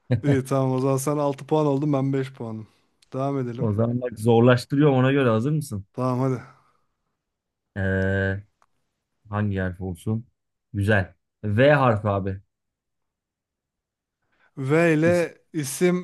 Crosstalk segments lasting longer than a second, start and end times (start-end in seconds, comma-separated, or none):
none